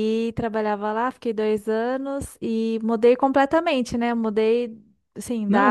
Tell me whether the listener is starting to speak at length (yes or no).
no